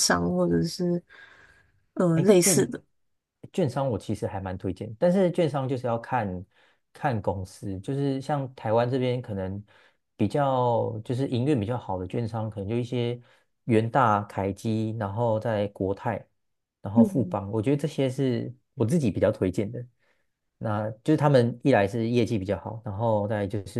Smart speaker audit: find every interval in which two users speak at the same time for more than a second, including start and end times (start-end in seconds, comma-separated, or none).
none